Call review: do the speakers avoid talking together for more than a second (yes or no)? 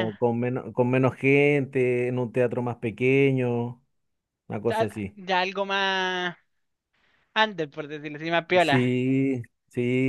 yes